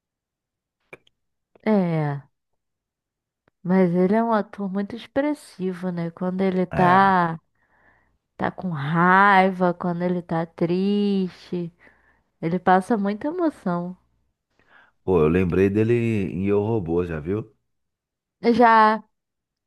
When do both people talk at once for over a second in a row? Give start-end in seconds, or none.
none